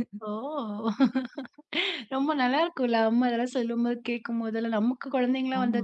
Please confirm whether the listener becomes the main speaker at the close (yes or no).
no